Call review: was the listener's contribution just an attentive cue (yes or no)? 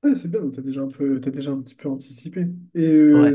yes